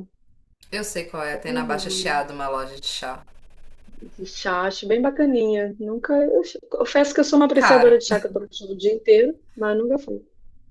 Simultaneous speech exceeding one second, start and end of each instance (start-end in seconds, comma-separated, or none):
none